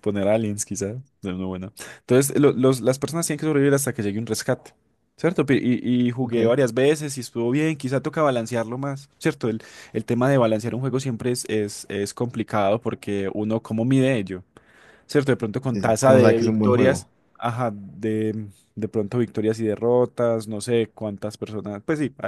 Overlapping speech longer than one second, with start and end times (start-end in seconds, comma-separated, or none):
15.6-17.1